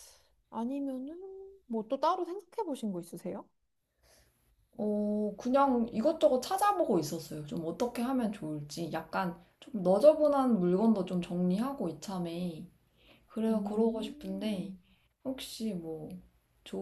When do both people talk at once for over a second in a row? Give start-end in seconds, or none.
13.5-14.7